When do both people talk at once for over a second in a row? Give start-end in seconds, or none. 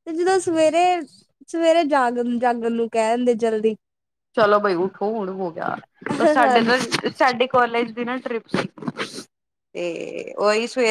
none